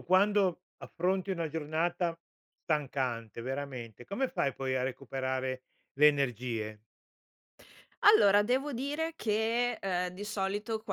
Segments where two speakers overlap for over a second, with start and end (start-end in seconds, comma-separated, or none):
none